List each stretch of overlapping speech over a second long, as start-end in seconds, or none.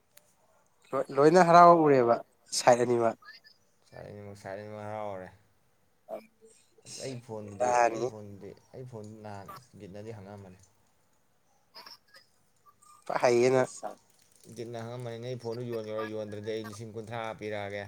none